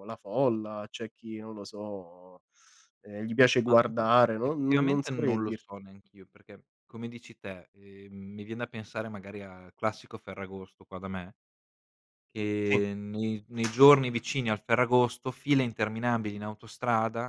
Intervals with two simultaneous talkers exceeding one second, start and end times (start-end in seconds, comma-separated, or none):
3.7-5.7